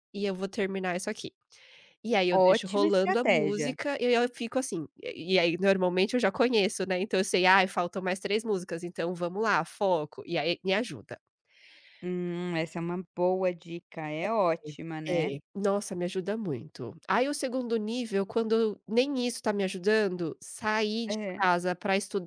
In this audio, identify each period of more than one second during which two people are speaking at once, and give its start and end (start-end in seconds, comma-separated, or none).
2.3-3.7